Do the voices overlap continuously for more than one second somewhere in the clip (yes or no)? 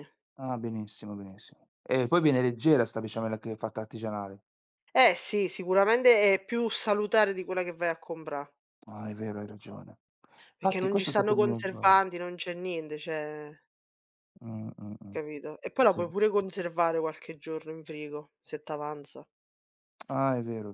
yes